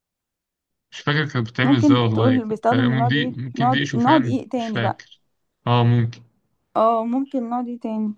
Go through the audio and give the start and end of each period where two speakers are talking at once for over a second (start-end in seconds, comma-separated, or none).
1.6-5.0